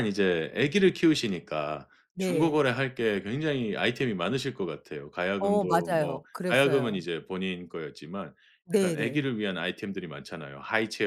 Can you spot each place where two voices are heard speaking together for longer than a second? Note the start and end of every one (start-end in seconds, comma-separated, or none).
5.4-7.0